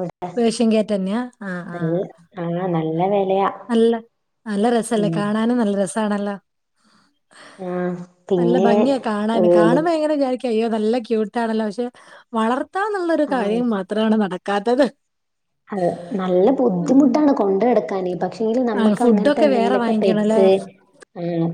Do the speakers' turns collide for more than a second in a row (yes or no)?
yes